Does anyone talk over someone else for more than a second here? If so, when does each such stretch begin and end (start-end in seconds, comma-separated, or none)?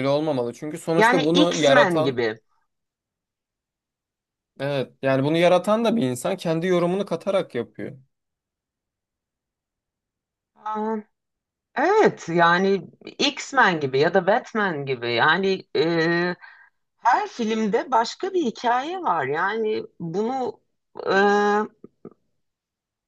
0.9-2.2